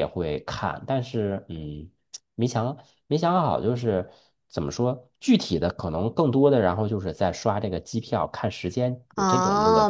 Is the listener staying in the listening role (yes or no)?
no